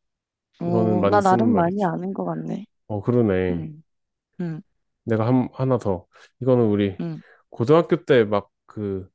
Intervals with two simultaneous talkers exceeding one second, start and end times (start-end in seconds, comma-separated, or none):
0.7-1.9